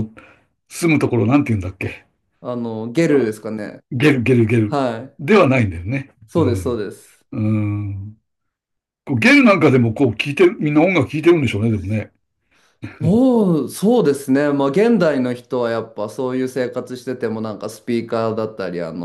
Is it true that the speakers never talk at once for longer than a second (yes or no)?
yes